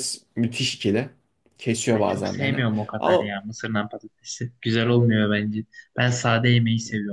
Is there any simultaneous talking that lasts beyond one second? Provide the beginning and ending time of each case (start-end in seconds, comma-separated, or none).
1.9-3.3